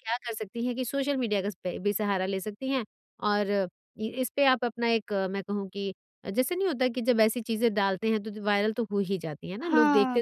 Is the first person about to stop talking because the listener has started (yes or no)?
no